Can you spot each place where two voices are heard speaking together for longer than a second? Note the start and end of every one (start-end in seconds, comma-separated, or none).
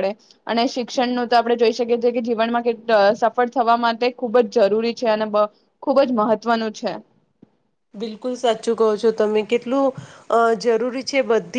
none